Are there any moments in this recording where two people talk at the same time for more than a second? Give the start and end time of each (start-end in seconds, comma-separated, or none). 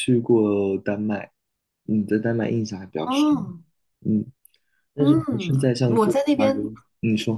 5.0-6.6